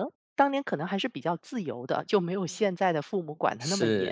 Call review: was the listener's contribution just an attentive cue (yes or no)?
no